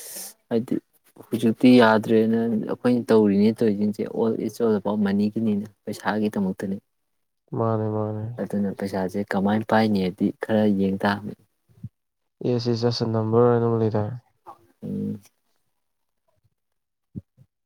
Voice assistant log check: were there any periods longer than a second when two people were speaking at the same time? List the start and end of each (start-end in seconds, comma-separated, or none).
none